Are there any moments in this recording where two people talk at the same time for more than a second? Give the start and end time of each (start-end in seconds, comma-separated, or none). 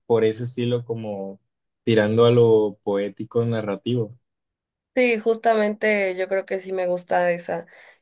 none